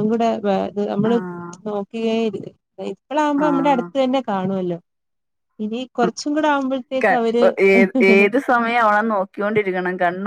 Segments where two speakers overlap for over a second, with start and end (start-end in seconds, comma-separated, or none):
none